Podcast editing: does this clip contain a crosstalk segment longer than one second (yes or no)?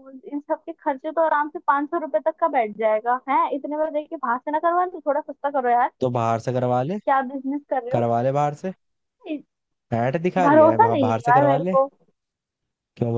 yes